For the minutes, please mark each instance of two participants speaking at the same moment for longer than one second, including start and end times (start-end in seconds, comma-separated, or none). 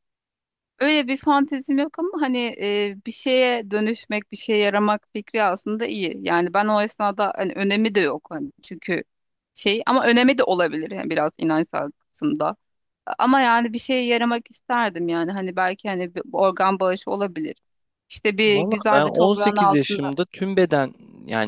18.5-20.1